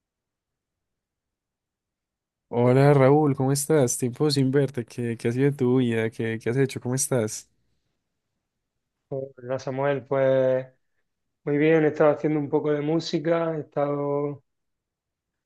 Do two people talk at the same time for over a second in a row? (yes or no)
no